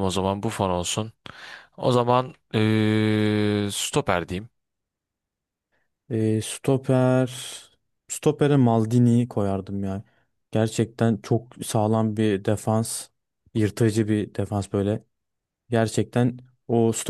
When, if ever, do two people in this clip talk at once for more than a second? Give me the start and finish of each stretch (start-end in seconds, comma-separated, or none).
none